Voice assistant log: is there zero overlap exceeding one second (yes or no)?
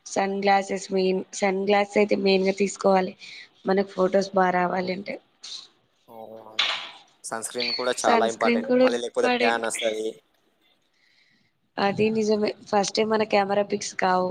no